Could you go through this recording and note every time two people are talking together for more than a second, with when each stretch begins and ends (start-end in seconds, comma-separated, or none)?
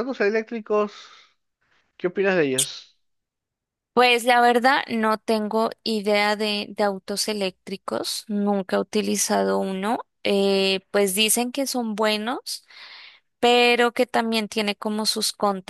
none